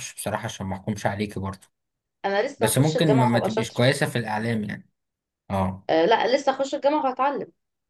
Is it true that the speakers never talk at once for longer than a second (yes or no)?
no